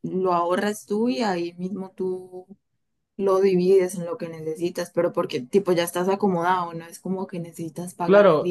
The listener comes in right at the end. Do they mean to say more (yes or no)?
yes